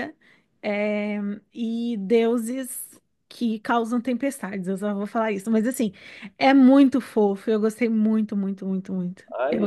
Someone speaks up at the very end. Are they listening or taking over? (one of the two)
taking over